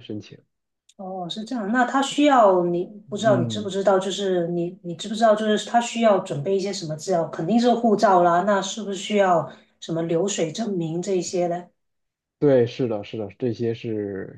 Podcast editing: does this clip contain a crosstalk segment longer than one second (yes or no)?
no